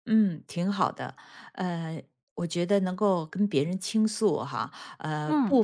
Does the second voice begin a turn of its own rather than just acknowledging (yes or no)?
no